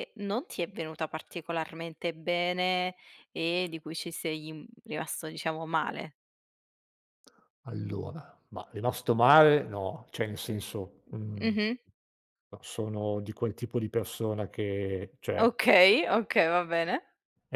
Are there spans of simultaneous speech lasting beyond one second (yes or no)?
no